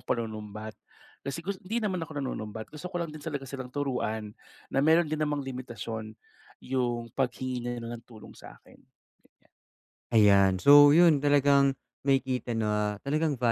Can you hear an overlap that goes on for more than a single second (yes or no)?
no